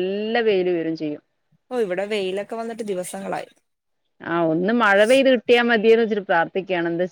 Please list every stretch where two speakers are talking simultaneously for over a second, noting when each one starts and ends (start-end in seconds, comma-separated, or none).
none